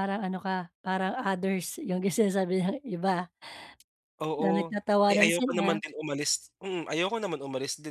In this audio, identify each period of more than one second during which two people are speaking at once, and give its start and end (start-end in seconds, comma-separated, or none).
4.4-5.8